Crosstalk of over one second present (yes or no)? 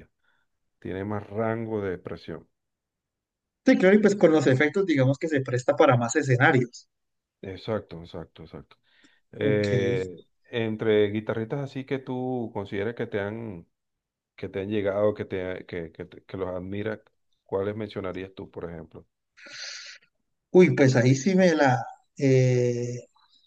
no